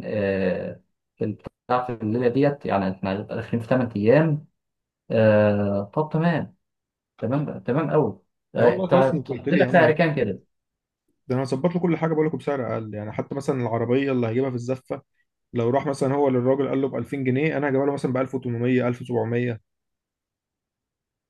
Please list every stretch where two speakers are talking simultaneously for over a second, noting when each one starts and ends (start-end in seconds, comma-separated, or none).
8.6-10.0